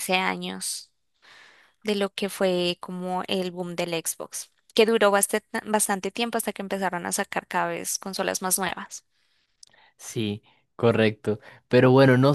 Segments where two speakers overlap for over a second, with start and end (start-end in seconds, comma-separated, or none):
none